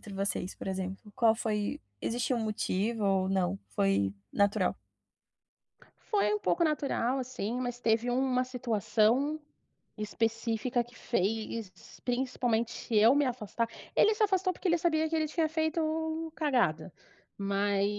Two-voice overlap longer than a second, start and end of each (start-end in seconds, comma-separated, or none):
none